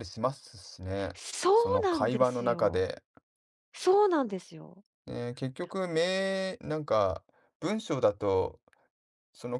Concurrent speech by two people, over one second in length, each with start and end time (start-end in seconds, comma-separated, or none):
1.5-2.9